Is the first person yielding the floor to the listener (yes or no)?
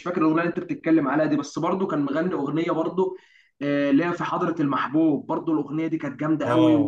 yes